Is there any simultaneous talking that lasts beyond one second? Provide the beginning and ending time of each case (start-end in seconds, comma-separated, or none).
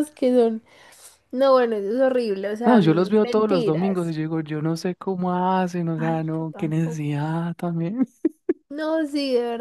2.6-4.1, 6.0-7.2